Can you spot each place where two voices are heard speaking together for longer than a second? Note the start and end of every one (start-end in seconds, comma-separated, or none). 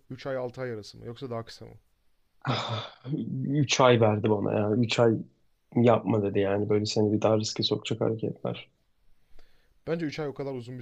none